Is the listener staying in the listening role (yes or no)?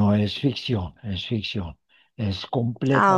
yes